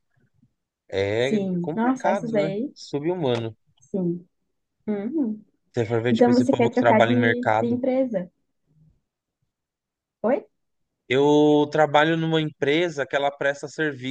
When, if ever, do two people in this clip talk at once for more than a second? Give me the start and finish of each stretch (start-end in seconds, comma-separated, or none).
1.2-2.7, 6.1-7.8